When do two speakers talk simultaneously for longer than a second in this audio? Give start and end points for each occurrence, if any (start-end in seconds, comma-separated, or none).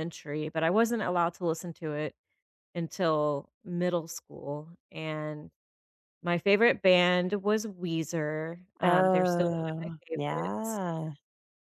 8.8-10.8